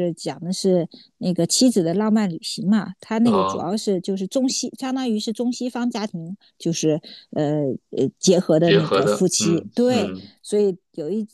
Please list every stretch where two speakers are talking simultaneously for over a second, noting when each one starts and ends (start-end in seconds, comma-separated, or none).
8.6-10.3